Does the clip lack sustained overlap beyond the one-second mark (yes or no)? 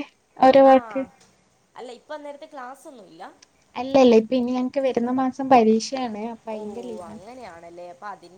yes